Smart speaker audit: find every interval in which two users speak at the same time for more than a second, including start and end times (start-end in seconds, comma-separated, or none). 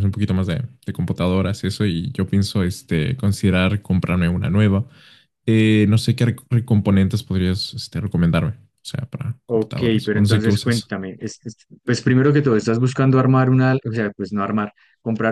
9.5-10.9